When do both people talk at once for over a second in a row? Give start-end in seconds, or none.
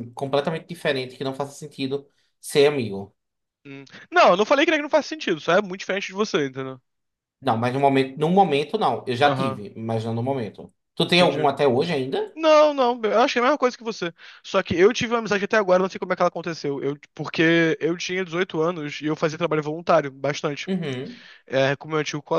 none